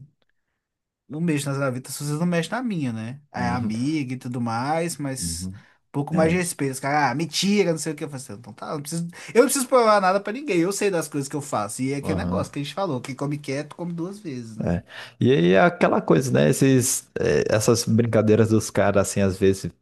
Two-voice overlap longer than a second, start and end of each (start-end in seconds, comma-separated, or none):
none